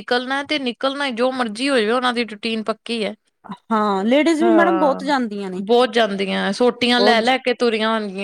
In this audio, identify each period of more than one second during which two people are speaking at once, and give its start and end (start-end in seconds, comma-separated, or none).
none